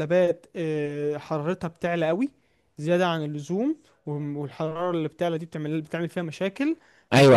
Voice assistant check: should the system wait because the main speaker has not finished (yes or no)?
no